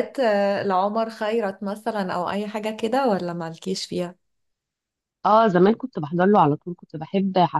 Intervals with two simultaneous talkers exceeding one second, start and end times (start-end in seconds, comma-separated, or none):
none